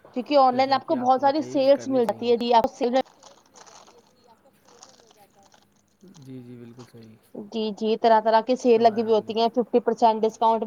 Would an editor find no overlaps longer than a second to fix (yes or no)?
no